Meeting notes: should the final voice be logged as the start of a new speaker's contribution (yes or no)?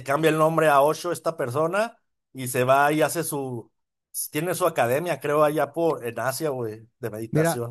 yes